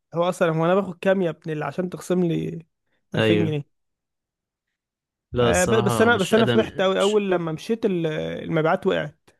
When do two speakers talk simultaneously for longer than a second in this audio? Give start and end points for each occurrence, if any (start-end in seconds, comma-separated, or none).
5.4-7.2